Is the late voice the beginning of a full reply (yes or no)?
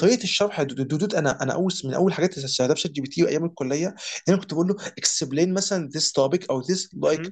no